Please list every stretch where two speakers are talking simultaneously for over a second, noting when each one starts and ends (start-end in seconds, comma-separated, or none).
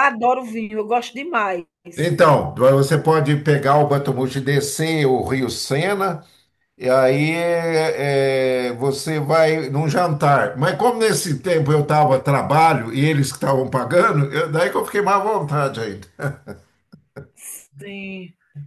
none